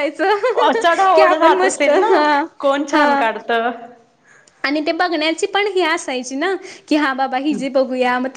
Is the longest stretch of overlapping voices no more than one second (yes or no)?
no